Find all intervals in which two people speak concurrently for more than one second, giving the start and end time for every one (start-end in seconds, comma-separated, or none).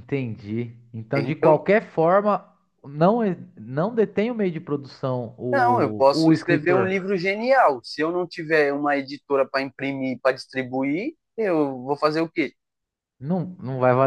5.5-7.0